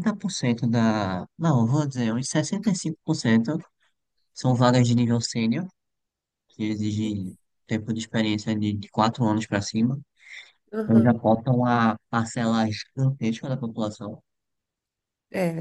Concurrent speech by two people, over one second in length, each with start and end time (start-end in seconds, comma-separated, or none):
none